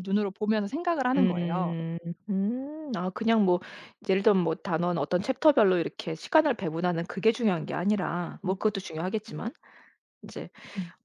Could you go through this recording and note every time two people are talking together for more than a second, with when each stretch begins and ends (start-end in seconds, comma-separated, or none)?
none